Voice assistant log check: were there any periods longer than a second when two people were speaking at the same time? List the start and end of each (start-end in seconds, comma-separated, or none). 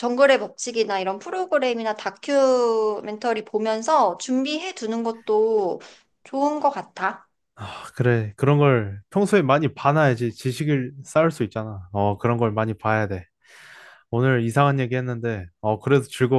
none